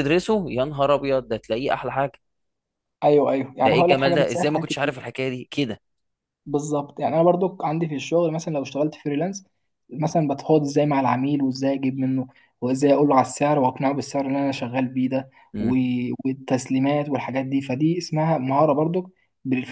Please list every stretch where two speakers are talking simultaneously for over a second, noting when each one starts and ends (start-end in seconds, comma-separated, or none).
3.6-4.9